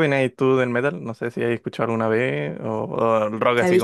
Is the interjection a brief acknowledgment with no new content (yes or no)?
no